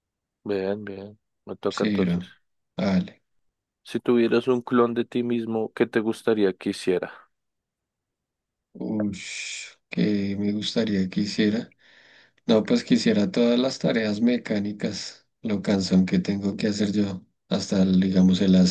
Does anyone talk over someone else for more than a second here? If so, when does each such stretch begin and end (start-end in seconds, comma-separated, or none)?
none